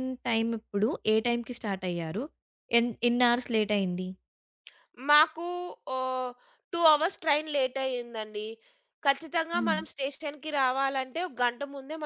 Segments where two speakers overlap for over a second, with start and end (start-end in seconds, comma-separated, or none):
none